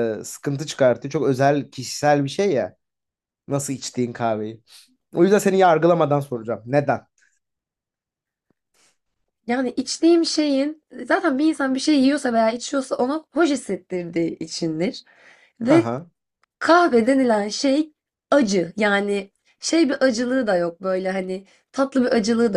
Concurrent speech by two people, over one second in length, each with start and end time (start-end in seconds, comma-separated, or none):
none